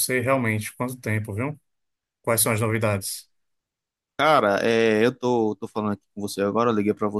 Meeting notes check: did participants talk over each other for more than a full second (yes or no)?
no